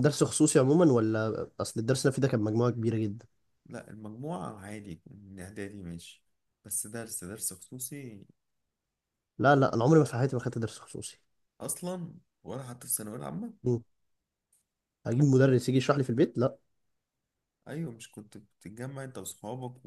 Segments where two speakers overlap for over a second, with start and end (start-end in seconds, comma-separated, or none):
none